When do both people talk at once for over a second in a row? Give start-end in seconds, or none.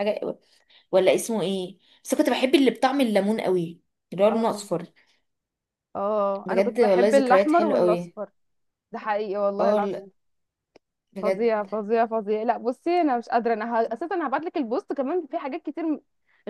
6.5-8.1